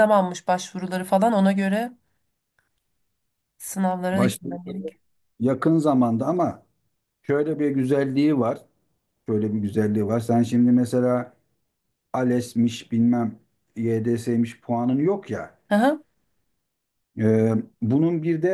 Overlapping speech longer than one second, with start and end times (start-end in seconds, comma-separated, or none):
none